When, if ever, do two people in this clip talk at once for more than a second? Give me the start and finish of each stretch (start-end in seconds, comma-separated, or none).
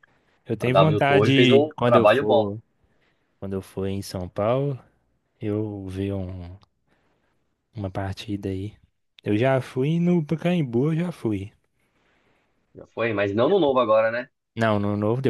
0.6-2.5